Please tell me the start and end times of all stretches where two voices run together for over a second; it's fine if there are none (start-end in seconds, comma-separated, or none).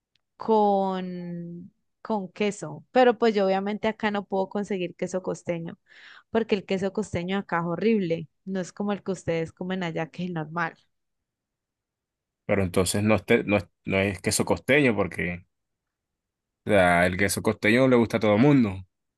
none